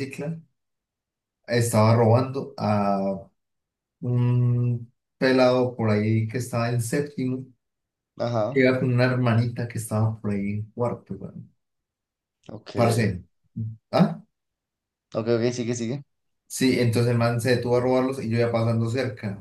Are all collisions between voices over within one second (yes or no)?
yes